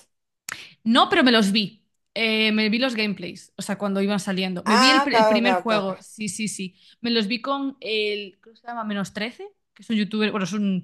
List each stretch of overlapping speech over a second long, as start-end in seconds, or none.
4.6-6.1